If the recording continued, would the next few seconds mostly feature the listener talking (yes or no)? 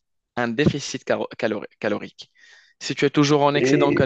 no